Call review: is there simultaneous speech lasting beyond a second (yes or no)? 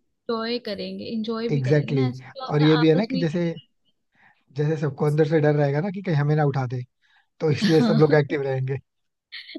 yes